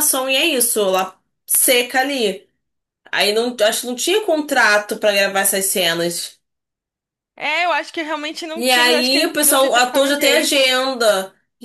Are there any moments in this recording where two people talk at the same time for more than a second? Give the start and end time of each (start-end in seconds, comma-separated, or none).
8.6-10.6